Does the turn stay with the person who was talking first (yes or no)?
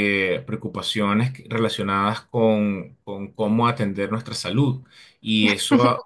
yes